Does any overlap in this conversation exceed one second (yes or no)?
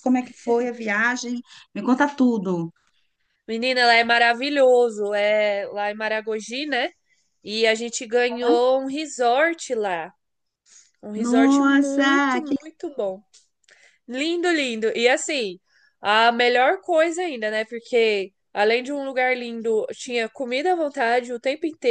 yes